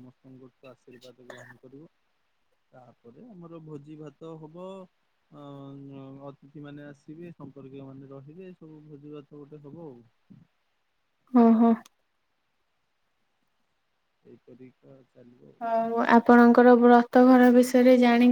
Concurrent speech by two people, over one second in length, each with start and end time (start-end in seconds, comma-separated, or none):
none